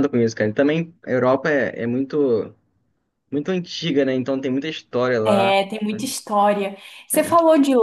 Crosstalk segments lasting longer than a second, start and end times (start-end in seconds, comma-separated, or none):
none